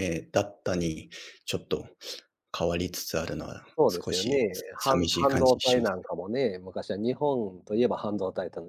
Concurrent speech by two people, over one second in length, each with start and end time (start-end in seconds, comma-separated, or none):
3.8-5.9